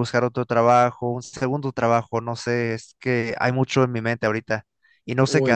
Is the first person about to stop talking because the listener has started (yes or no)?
yes